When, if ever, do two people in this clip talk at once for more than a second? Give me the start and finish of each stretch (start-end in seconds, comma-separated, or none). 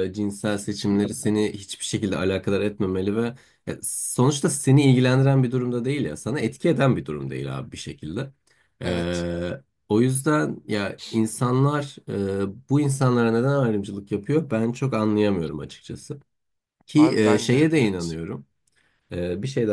16.9-18.2